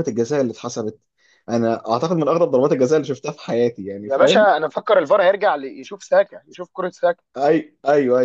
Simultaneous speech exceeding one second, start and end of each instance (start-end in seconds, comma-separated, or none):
none